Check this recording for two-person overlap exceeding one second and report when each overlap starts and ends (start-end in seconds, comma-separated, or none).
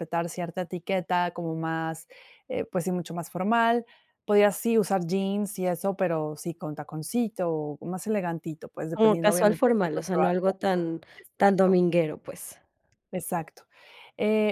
8.9-10.5